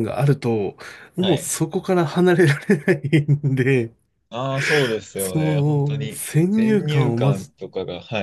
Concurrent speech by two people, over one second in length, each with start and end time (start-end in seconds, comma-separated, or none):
5.2-7.5